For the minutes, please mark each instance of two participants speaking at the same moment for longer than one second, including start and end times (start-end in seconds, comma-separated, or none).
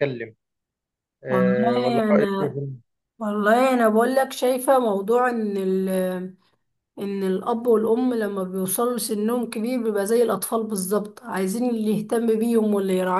1.3-2.6